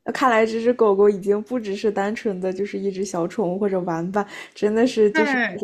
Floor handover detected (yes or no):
yes